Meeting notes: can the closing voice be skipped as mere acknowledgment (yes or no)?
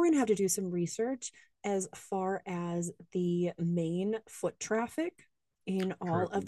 yes